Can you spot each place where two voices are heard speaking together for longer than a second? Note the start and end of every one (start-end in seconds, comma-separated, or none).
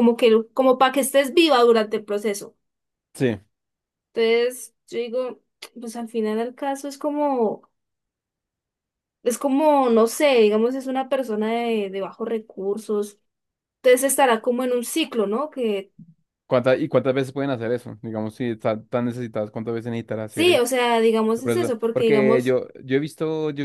21.4-22.6